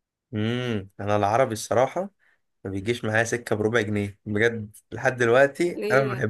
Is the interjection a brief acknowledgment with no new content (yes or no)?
no